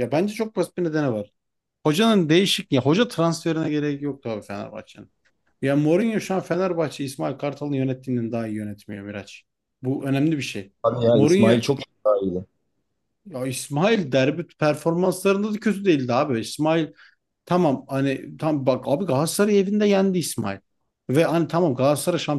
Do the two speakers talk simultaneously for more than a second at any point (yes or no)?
no